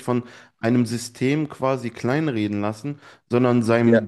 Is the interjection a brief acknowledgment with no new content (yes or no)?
yes